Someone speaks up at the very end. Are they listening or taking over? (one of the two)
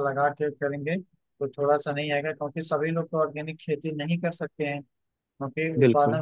listening